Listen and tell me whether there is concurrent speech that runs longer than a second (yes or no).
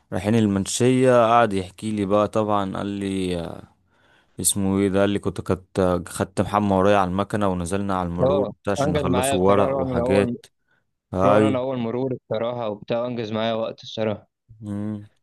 yes